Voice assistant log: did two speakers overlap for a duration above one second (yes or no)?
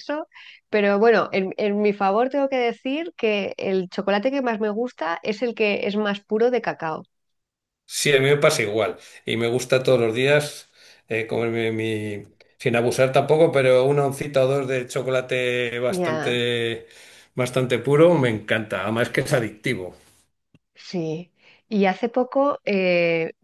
no